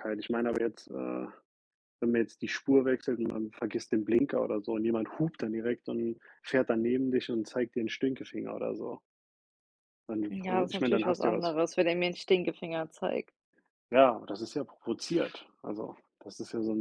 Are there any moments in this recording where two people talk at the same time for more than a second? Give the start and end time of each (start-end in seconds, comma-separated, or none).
10.3-11.6